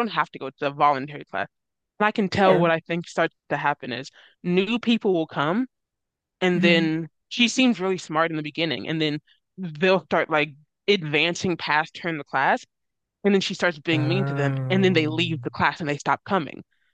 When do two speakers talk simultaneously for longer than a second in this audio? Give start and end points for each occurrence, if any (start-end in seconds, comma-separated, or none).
13.9-15.3